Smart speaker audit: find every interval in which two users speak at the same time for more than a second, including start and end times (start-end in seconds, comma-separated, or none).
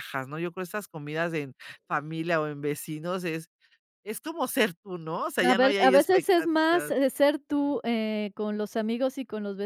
5.4-6.9